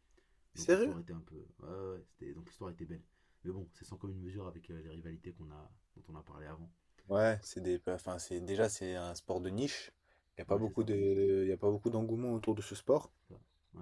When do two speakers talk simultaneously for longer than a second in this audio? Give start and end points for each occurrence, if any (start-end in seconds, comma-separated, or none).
none